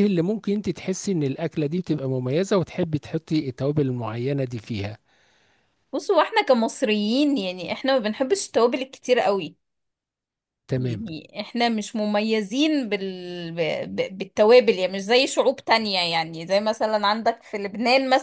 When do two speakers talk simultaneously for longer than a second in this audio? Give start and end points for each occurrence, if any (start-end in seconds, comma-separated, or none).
none